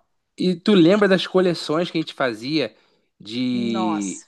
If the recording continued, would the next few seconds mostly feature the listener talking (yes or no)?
no